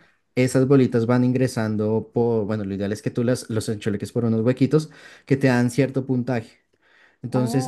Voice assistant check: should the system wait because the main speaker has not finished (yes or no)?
yes